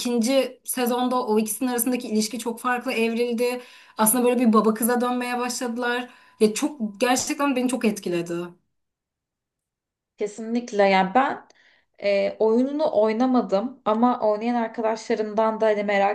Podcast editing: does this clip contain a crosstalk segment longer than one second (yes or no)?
no